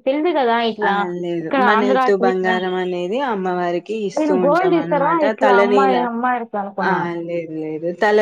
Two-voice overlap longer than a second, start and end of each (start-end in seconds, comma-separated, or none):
4.2-6.0